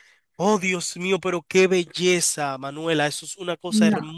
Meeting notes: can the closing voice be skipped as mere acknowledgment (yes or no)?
yes